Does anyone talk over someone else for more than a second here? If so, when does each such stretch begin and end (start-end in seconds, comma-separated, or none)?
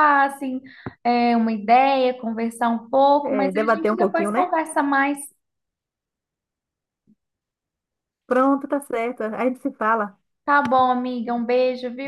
3.2-4.5